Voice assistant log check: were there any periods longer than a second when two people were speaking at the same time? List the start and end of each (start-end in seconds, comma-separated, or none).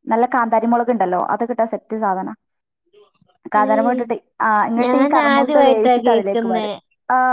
4.8-6.7